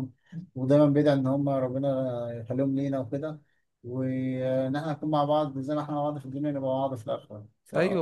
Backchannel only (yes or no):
no